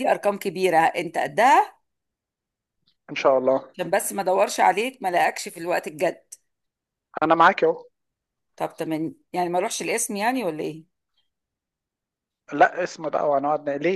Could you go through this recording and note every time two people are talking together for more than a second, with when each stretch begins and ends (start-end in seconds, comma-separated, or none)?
none